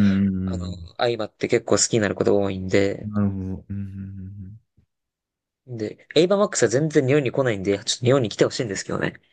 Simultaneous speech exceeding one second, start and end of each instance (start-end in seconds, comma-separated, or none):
none